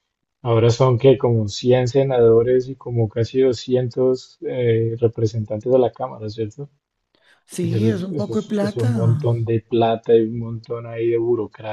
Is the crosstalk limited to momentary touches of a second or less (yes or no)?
no